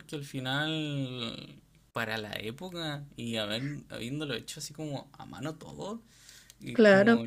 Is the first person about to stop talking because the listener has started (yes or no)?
no